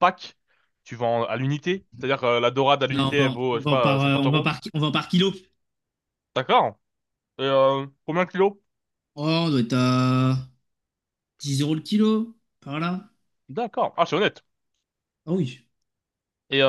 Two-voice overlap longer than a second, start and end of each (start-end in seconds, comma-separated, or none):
2.9-4.5